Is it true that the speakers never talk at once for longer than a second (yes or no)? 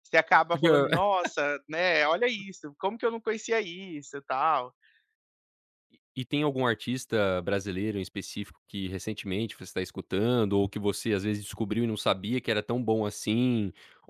yes